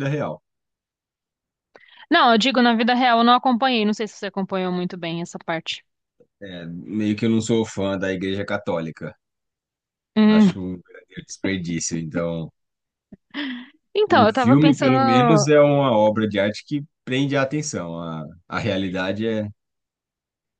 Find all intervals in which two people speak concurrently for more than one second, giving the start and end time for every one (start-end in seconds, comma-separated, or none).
14.0-15.5